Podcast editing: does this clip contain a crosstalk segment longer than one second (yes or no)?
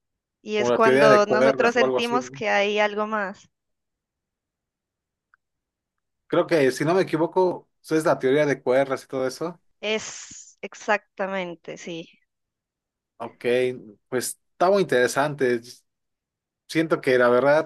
yes